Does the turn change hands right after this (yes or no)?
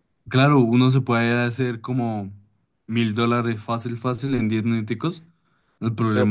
no